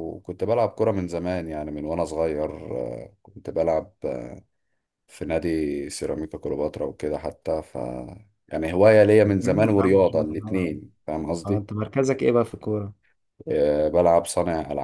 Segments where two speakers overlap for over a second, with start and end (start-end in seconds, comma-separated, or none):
9.2-10.7